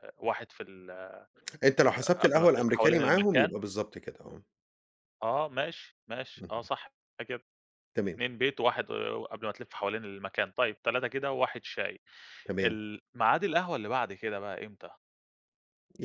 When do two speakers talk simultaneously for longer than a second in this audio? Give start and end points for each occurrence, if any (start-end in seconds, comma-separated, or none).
1.9-3.6